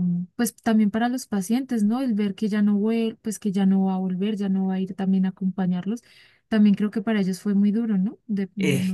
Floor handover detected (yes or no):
yes